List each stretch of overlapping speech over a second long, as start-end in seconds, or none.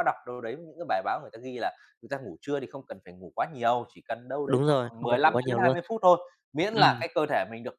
4.5-5.8